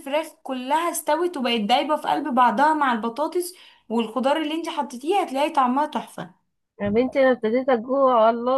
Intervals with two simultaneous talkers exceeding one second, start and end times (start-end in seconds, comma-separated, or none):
none